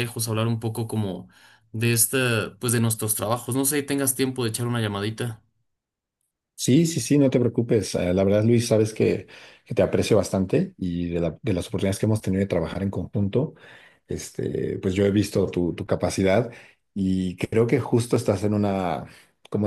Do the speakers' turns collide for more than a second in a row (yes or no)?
no